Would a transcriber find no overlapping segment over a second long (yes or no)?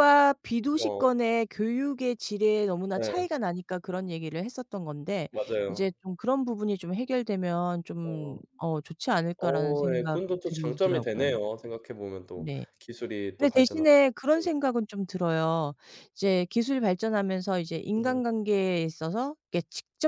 no